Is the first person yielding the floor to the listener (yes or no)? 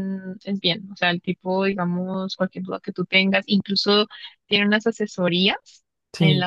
no